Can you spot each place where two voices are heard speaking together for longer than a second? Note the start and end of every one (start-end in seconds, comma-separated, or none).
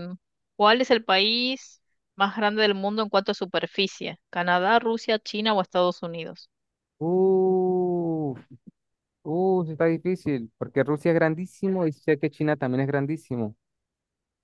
none